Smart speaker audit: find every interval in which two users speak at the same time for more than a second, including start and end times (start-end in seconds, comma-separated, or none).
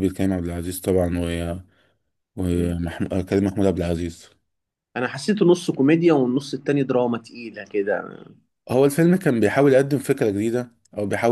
none